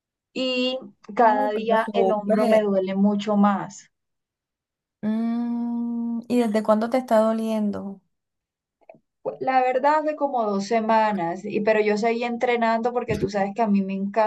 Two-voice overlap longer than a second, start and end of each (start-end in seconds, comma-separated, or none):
1.1-2.6